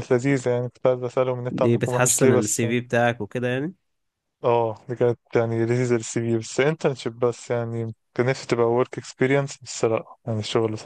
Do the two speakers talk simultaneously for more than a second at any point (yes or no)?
yes